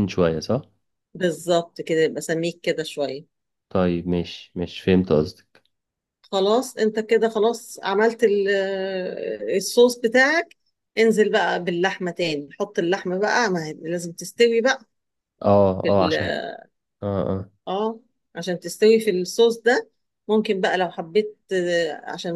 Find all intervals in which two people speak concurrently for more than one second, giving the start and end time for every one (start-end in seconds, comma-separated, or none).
none